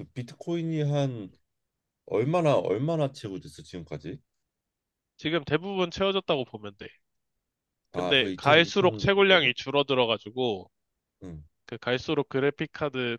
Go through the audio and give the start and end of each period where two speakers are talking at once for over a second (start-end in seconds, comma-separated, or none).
7.9-9.5